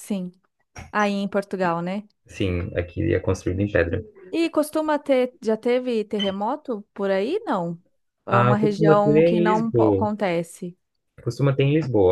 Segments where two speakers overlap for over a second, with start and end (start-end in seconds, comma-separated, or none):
8.3-10.1